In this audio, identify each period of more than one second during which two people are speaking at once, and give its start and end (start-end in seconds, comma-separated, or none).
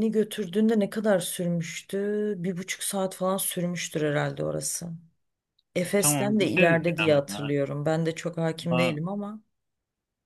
5.8-7.5